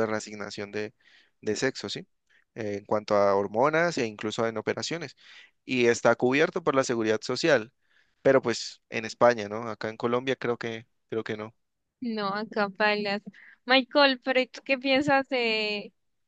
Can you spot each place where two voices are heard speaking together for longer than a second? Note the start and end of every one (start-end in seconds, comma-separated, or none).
none